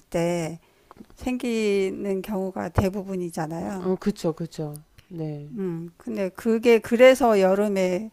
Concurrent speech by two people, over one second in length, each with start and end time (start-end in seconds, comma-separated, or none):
none